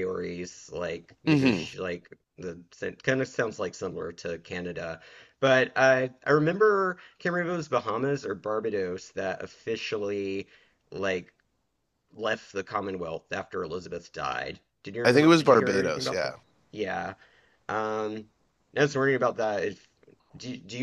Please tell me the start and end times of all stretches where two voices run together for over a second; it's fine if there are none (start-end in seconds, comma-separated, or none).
15.0-16.3